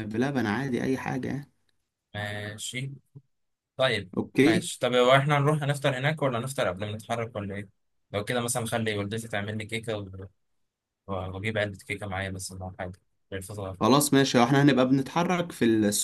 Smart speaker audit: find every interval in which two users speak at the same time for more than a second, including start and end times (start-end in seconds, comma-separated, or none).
none